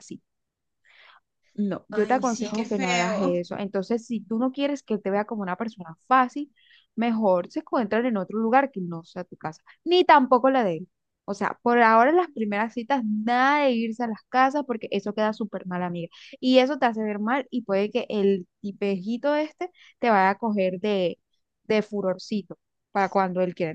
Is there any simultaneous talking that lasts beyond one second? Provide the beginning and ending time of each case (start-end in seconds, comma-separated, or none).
1.9-3.4